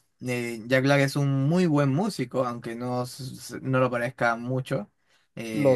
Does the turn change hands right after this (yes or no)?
no